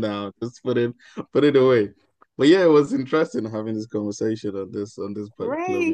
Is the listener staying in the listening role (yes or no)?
no